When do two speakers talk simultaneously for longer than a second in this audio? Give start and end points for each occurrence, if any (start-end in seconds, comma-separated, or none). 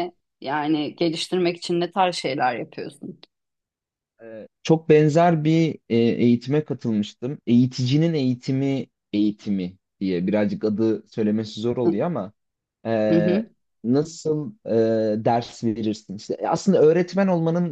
none